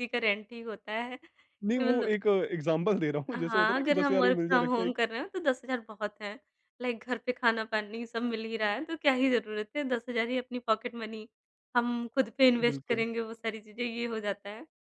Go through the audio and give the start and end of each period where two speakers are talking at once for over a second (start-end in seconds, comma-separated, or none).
3.3-5.0